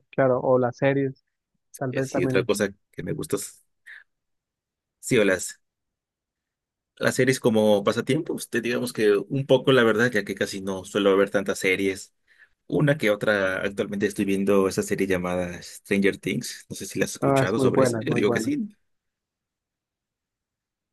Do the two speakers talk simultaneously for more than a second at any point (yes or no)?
yes